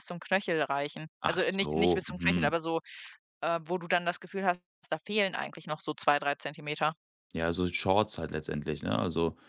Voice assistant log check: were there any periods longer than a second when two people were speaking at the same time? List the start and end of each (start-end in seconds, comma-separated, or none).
1.2-2.6